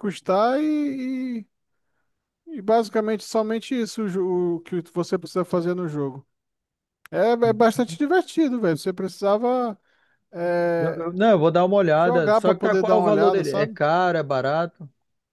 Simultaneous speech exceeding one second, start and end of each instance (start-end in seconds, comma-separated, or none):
11.9-13.8